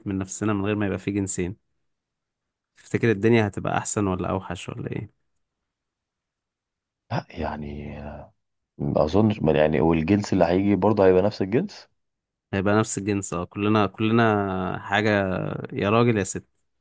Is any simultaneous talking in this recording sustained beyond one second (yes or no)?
no